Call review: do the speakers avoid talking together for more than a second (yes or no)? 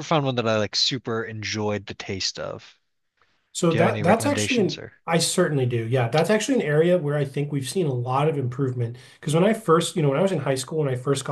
no